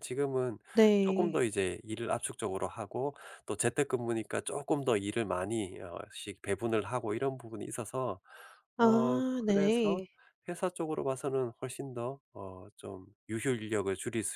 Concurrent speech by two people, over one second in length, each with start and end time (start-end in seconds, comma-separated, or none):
8.8-10.0